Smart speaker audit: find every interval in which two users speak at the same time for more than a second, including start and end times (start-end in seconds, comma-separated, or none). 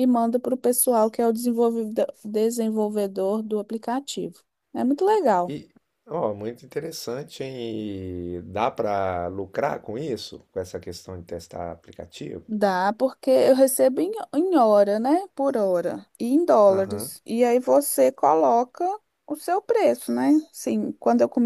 none